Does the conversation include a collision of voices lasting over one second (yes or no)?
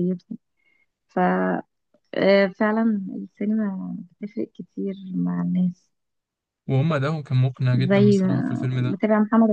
yes